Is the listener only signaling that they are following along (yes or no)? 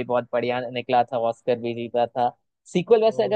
yes